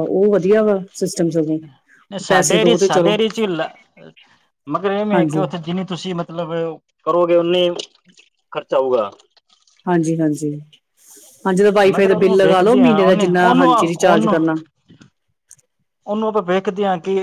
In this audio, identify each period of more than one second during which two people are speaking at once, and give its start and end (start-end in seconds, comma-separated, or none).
11.9-14.4